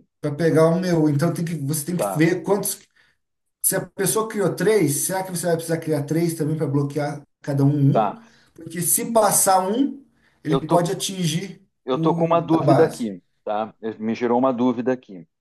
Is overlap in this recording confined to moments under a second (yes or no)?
no